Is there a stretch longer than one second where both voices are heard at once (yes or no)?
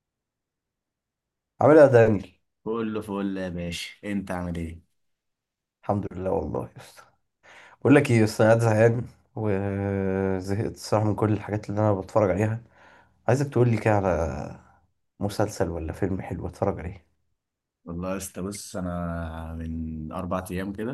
no